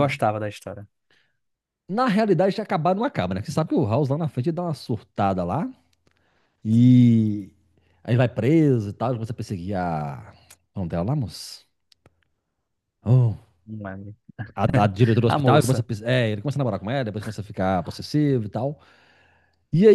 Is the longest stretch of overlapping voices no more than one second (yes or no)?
yes